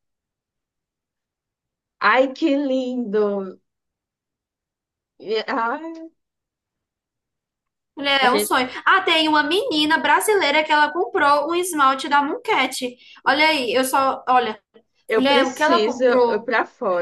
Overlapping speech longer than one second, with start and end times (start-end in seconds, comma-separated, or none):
15.2-16.5